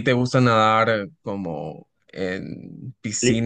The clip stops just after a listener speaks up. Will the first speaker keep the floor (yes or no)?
yes